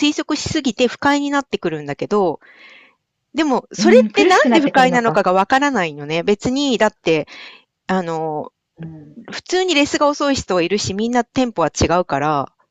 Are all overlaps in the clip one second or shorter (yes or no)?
no